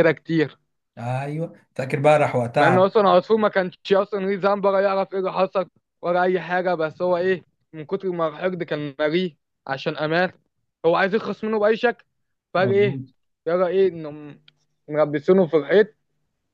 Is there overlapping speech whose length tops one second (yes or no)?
no